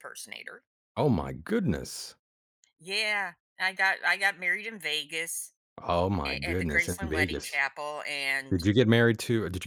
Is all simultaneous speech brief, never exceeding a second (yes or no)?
no